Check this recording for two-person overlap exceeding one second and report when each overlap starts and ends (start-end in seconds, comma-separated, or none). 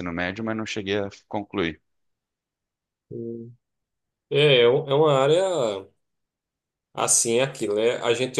none